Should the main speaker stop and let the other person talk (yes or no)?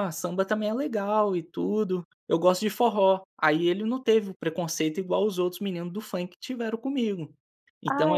yes